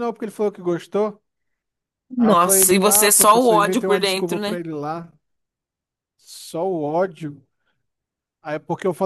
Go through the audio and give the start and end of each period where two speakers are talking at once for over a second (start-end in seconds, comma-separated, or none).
2.2-4.6